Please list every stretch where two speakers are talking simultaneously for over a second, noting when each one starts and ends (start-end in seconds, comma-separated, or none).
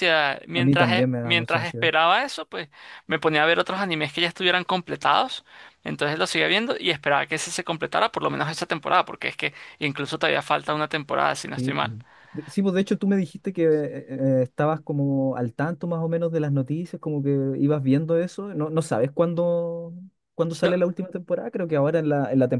0.5-1.9